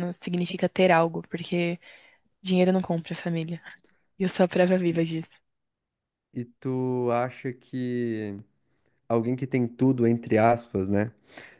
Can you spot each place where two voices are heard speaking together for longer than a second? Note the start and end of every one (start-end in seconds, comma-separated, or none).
none